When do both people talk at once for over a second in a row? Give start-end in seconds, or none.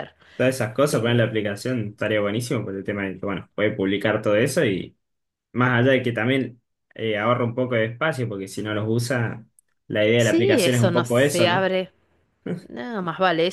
10.2-11.7